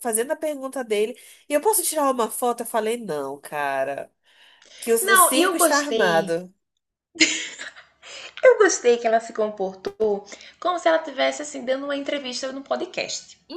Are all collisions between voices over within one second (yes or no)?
no